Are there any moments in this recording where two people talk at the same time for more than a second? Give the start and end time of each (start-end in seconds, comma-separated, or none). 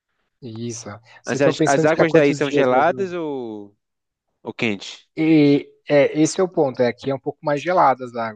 1.2-2.9